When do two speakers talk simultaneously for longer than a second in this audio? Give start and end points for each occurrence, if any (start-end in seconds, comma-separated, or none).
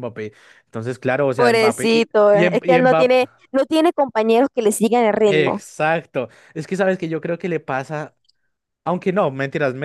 1.4-3.2